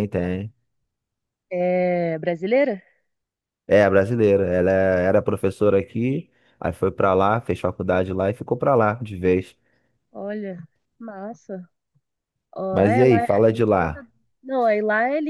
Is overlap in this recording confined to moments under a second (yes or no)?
no